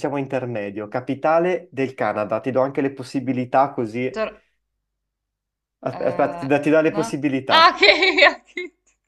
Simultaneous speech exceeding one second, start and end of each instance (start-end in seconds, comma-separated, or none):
5.9-7.8